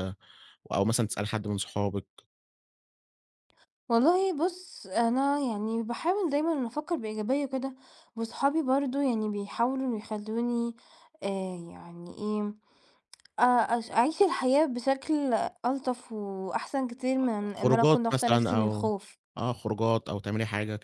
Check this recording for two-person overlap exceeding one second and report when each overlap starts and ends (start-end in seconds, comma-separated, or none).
17.5-18.9